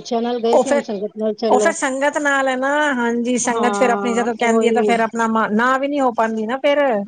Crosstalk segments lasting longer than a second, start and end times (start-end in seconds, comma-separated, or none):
3.5-4.9